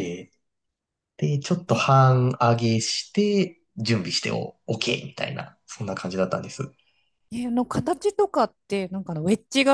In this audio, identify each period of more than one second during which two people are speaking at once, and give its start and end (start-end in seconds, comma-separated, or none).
none